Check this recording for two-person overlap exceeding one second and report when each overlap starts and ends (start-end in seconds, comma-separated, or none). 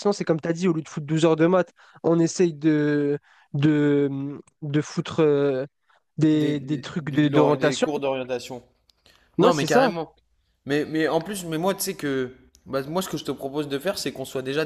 6.3-7.9